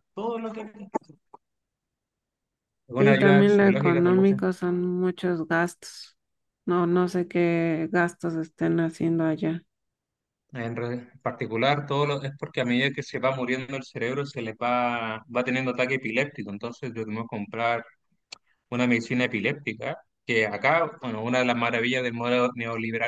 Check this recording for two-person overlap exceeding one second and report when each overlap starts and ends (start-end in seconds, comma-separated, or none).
3.0-4.3